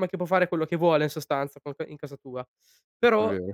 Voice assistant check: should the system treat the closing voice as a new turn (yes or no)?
no